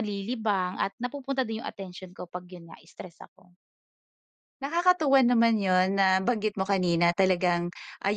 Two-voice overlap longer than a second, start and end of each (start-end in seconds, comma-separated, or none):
none